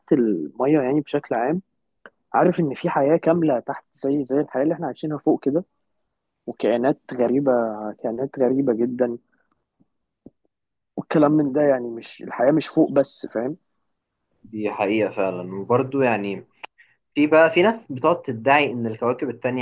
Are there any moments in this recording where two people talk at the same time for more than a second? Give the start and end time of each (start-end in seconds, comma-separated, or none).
none